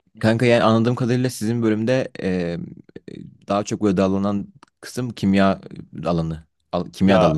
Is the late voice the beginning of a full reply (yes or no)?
yes